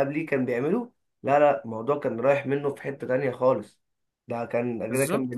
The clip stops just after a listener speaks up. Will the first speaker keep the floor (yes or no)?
yes